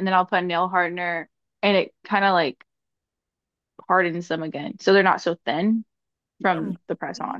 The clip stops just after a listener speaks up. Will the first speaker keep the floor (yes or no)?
no